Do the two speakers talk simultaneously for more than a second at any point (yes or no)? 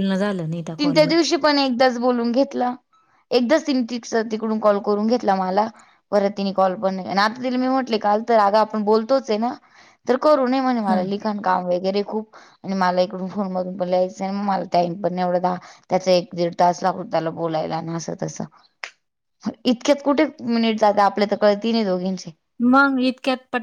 no